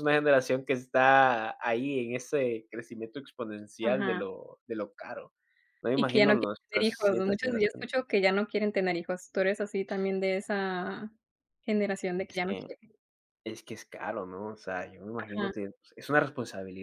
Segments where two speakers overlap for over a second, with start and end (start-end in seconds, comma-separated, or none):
5.9-7.9